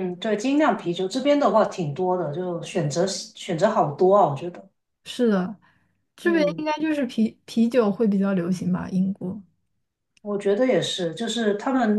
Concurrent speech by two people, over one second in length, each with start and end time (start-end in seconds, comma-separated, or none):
none